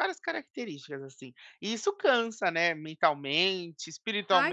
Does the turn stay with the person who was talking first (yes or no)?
no